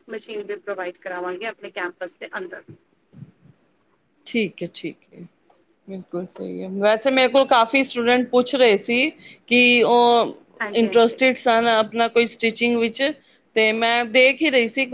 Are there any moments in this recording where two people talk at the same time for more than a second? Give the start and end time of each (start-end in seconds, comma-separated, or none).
none